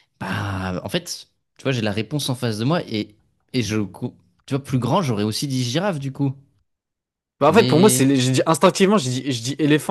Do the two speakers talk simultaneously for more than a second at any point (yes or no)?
no